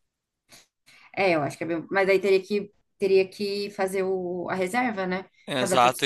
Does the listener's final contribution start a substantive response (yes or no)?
yes